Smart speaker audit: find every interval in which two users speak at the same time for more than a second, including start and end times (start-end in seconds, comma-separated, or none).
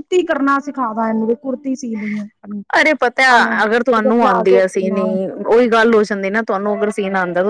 none